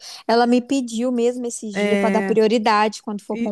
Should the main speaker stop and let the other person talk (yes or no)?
yes